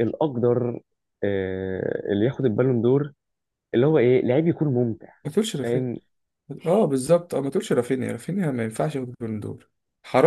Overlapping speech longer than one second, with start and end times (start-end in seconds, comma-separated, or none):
none